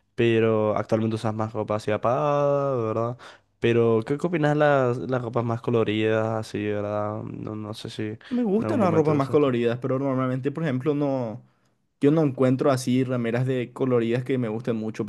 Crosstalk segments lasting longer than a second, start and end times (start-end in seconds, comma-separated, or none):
8.3-9.5